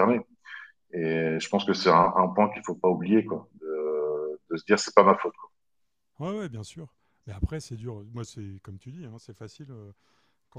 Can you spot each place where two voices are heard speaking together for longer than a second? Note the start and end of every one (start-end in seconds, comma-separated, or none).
none